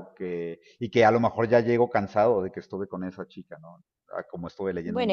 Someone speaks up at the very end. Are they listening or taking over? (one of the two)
taking over